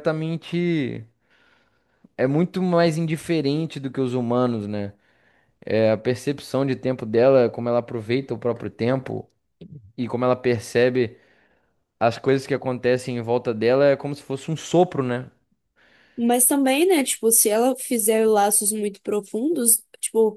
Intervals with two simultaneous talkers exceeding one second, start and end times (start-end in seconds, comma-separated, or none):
none